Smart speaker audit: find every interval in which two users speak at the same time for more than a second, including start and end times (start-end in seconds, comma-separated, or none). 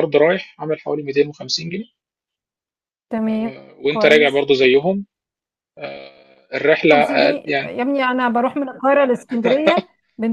none